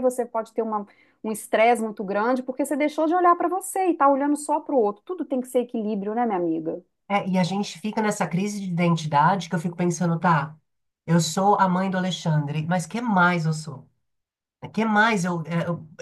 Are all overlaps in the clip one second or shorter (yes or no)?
yes